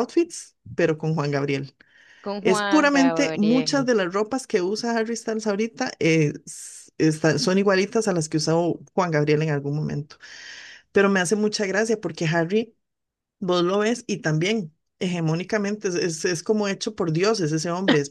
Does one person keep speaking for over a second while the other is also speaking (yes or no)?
yes